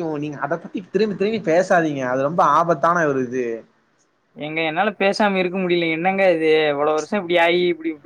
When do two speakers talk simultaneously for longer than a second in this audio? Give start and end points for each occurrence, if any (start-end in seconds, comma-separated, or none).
none